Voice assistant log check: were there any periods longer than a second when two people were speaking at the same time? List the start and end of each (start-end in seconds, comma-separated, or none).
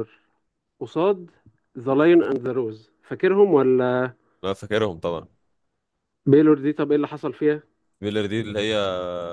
none